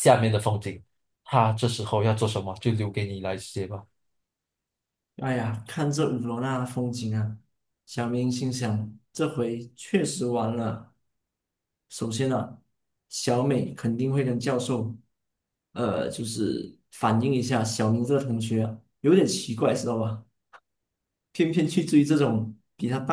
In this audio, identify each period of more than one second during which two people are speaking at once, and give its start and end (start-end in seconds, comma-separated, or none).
none